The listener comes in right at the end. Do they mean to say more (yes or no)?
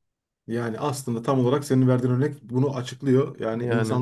no